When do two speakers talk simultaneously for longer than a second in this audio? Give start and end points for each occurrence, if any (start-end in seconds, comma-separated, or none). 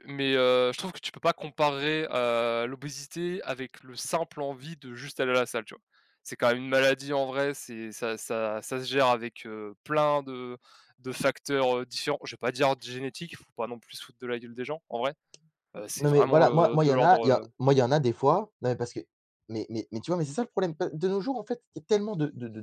16.0-17.4